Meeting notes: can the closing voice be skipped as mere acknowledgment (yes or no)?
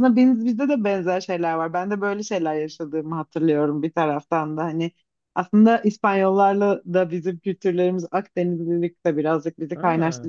yes